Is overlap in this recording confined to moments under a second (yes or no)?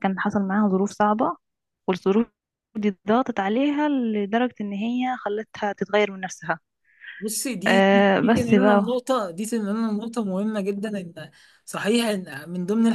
no